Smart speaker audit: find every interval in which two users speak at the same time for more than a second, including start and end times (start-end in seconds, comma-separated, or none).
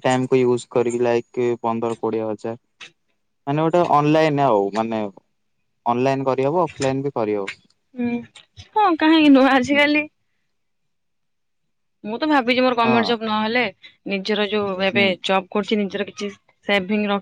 none